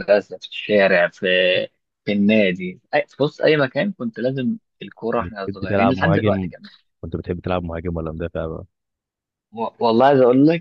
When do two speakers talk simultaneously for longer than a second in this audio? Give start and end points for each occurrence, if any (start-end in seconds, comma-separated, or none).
5.2-6.5